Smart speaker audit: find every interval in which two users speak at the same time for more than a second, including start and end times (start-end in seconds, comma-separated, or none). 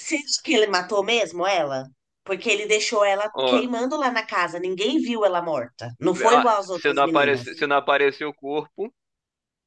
6.1-7.6